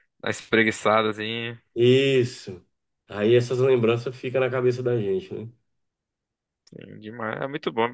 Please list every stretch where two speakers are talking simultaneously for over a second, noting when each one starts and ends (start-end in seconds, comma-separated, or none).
none